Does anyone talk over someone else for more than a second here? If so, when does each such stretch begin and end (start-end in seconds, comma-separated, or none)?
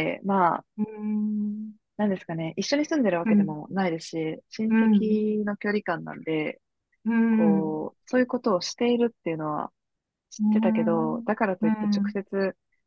10.4-12.1